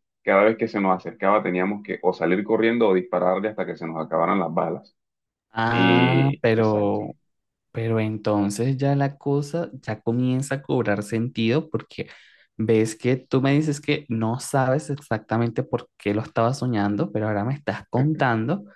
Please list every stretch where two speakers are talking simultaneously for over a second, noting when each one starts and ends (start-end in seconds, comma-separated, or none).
5.7-7.0